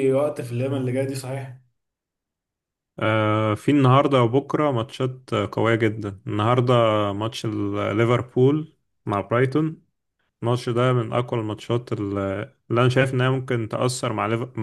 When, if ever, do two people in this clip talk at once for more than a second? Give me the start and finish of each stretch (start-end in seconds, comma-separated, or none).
none